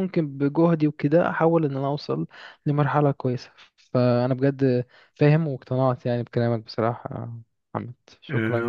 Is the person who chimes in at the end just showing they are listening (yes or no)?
no